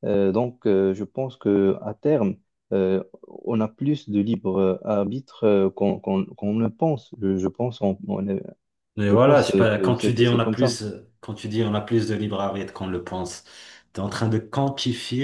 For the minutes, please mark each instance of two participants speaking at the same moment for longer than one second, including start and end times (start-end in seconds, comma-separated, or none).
9.1-10.8